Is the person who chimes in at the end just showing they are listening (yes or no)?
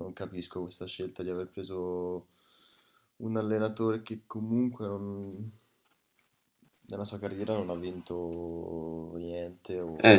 no